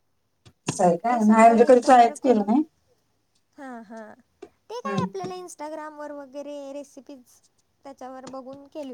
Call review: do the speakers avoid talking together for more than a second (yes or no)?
no